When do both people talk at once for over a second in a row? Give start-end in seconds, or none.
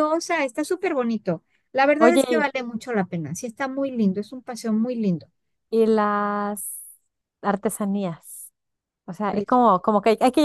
none